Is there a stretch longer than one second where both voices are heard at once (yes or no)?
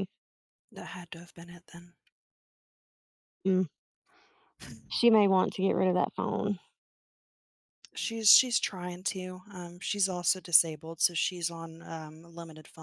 no